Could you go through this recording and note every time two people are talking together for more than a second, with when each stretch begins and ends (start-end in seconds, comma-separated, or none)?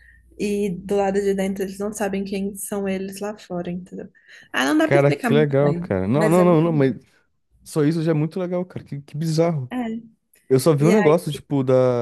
4.8-6.9